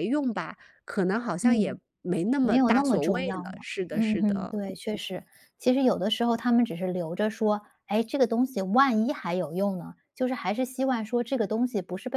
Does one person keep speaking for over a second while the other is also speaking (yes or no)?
yes